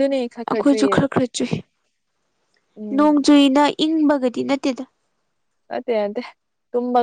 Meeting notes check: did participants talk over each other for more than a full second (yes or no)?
no